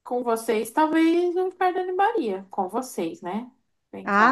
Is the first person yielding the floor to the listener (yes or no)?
yes